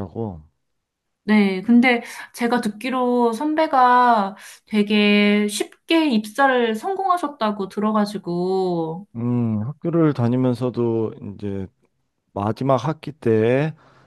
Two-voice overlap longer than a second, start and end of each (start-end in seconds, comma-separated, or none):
none